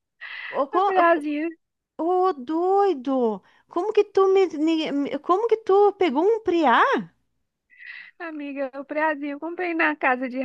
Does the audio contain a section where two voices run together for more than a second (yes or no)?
no